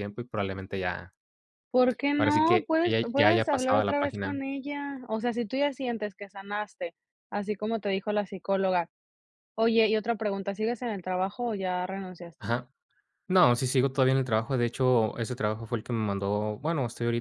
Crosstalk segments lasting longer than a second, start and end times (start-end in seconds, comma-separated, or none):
2.2-4.4